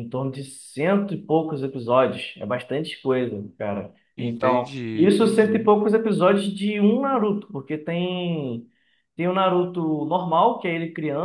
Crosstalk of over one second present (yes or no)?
yes